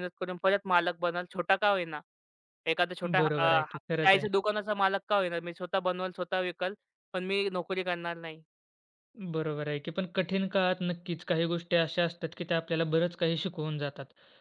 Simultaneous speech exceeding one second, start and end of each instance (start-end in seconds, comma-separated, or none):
none